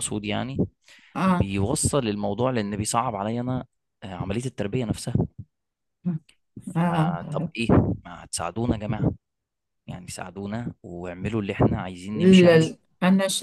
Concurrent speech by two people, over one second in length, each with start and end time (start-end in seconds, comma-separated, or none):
none